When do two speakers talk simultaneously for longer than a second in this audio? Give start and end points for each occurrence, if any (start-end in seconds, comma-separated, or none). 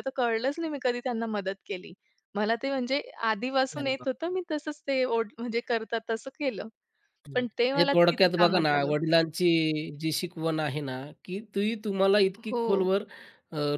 7.3-8.9